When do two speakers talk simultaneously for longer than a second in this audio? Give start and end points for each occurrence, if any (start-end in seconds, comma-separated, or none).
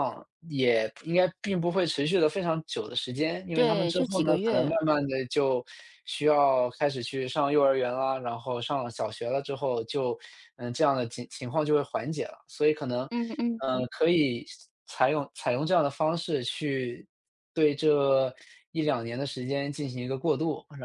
3.5-4.8